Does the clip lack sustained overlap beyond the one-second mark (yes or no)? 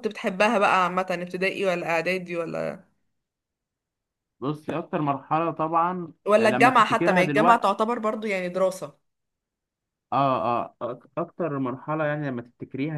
no